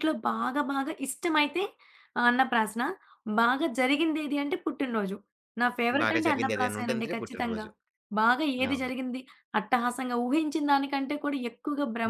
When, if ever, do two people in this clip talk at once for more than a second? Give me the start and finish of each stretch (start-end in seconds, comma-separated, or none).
6.0-7.7